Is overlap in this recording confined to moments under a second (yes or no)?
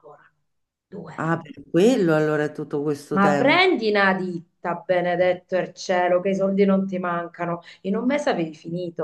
yes